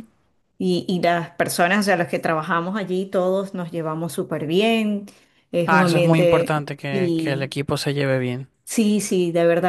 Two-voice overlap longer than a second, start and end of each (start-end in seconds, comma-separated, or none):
5.7-7.5